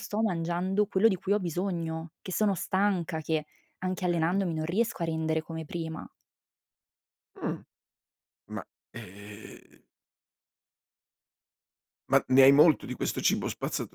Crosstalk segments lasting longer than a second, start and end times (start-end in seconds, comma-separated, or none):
none